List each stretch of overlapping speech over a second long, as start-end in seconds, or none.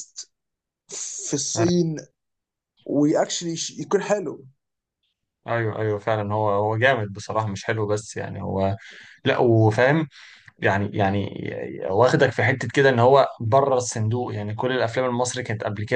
none